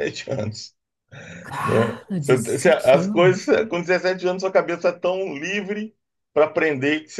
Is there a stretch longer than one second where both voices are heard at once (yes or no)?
yes